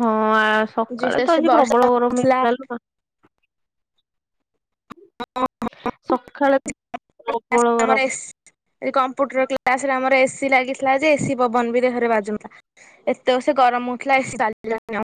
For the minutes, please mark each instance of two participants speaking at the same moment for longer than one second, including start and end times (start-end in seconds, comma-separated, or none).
1.0-2.4